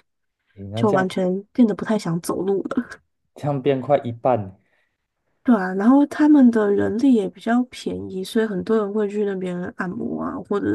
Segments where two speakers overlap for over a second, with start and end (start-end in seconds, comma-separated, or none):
none